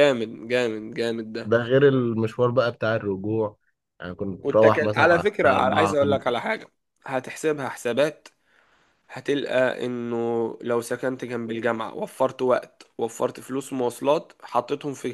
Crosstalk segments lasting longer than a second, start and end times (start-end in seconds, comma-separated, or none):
4.4-6.3